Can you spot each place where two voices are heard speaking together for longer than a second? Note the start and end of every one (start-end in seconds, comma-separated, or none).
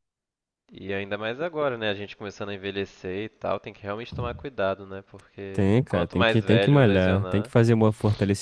5.5-7.5